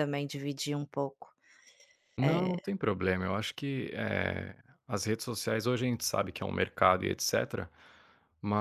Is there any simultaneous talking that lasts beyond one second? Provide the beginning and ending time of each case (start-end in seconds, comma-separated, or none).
none